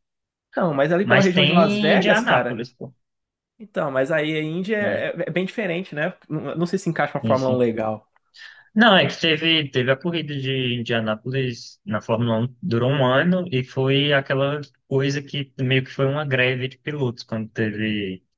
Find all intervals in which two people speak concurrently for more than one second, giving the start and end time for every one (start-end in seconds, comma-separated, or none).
1.0-2.6